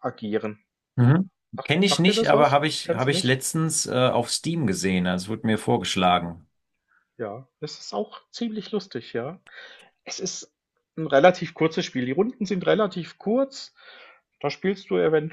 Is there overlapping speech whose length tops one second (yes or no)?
yes